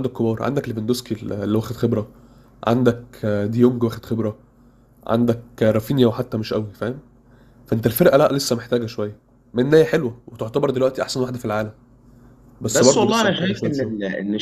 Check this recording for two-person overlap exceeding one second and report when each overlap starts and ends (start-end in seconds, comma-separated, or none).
12.7-13.9